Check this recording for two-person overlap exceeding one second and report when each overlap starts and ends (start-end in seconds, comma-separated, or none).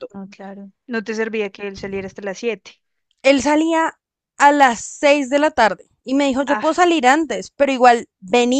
none